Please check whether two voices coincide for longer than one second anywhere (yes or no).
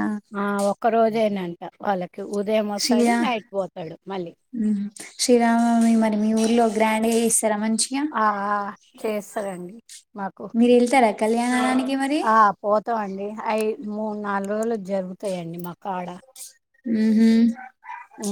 no